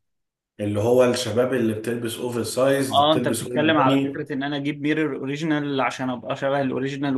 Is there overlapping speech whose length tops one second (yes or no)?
yes